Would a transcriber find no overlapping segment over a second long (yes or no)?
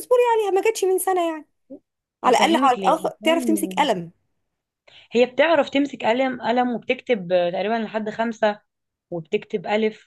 no